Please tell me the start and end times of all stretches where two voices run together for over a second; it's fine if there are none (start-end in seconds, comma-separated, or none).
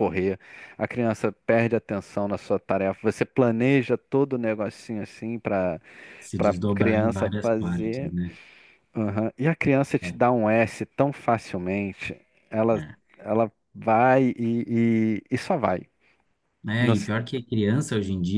6.4-8.1